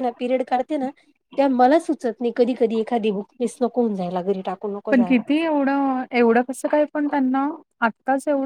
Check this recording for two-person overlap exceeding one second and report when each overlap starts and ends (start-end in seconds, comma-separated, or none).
none